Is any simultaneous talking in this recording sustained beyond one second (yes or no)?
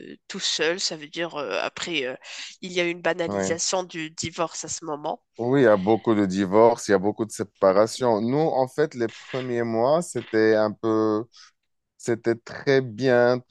no